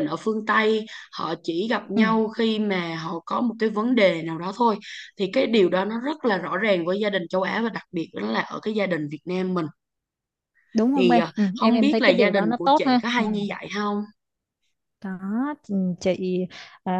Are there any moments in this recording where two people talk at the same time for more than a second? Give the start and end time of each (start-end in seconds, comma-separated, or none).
10.9-13.2